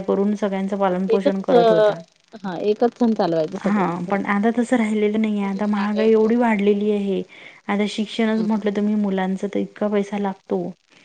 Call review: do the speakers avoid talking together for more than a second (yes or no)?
yes